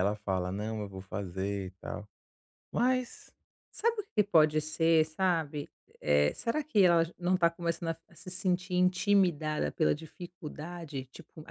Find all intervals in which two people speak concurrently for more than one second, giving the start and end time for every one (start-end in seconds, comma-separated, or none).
none